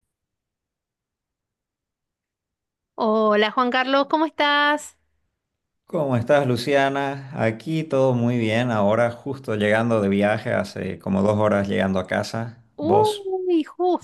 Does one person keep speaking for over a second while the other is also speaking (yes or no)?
no